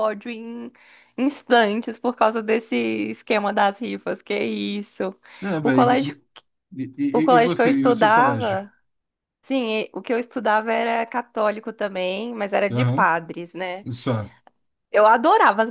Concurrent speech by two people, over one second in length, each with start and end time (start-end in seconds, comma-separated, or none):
7.1-8.7